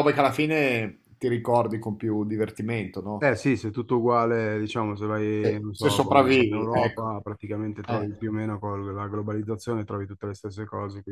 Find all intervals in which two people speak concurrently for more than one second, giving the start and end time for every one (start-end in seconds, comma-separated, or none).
5.4-7.1